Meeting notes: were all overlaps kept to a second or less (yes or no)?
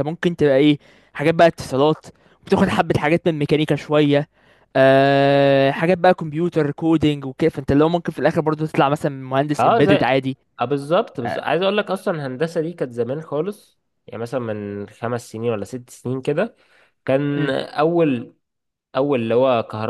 yes